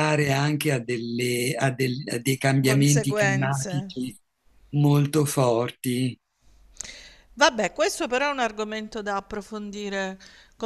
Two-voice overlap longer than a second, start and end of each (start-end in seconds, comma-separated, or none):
2.6-3.9